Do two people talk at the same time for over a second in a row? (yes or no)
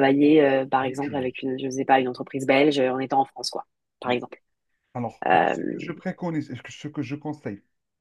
no